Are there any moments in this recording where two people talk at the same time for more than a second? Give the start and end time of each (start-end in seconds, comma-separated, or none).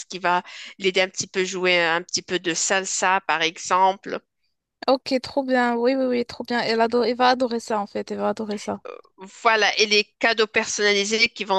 none